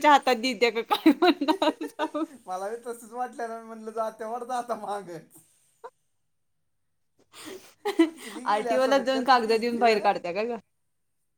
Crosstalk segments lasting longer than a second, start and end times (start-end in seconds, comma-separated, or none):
8.6-10.0